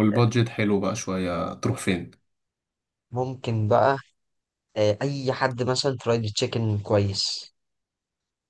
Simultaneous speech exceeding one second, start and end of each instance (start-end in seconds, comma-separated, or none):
none